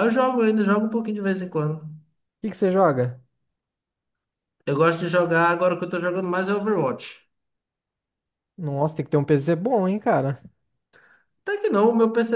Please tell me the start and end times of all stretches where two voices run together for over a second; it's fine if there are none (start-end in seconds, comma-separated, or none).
none